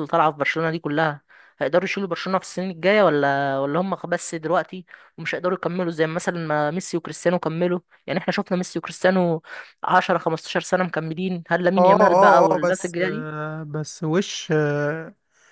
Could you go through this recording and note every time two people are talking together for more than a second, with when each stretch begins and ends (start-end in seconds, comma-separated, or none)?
11.8-13.3